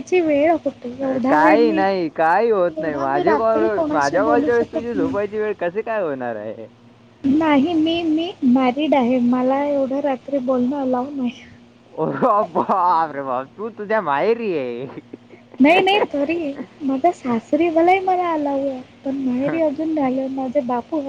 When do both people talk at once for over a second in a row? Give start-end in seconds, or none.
2.8-5.2